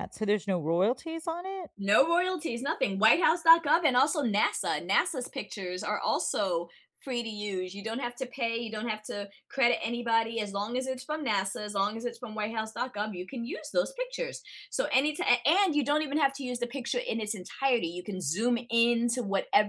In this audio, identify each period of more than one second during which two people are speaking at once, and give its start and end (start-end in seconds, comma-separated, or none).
none